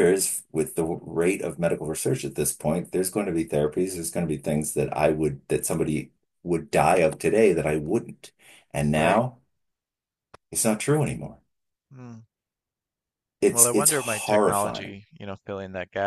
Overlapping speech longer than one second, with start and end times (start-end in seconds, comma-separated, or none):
13.5-15.0